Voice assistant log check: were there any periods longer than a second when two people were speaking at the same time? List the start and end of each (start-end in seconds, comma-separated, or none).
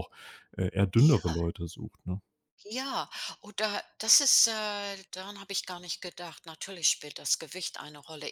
none